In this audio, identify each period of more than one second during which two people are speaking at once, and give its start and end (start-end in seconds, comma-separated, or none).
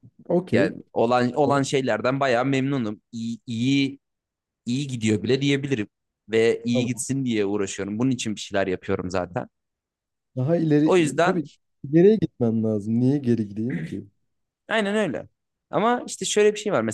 none